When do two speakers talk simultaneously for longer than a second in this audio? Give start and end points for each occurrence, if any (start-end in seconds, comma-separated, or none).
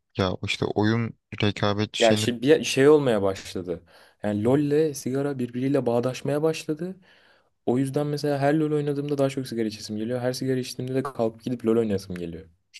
none